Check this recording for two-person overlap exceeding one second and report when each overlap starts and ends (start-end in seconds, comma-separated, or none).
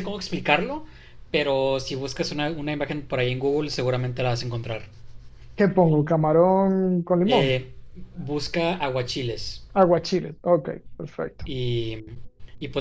none